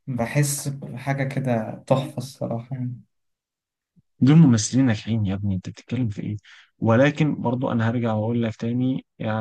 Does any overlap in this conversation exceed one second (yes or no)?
no